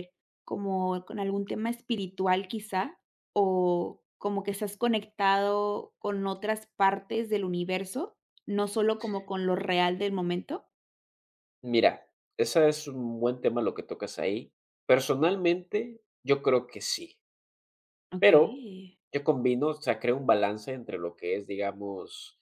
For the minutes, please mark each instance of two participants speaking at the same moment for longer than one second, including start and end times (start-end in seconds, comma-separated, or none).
none